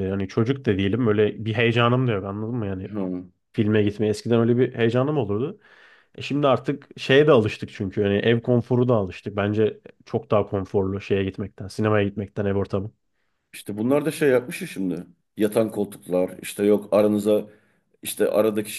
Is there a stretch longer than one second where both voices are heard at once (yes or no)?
no